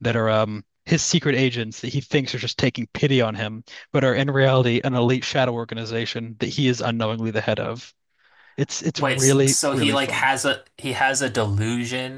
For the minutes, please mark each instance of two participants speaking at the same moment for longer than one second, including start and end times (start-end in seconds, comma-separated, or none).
8.9-10.3